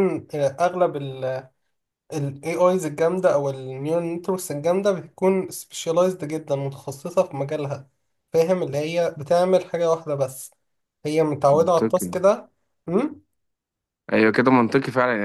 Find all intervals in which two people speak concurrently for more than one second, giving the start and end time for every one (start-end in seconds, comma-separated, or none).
none